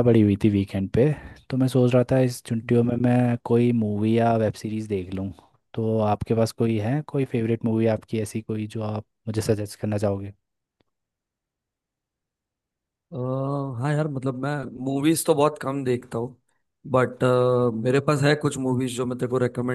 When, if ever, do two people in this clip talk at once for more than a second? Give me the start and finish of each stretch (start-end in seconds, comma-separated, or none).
none